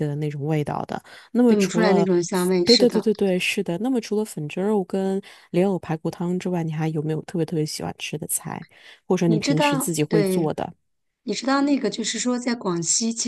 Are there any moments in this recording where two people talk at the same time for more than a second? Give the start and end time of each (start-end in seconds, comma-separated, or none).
1.5-3.0, 9.2-10.5